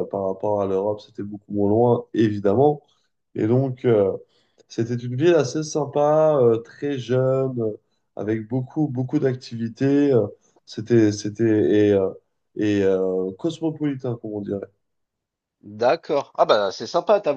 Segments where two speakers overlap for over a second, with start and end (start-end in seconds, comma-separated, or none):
none